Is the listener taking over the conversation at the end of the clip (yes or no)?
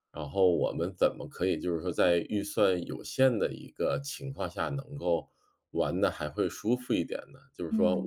no